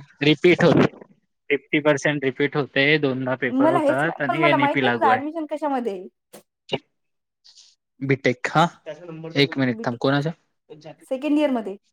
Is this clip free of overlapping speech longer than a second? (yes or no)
no